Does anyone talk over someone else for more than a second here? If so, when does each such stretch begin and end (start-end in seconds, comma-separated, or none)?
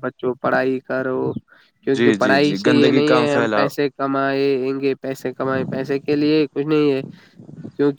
1.9-3.7